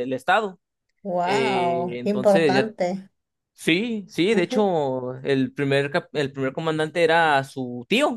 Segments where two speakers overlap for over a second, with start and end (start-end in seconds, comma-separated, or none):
1.2-2.7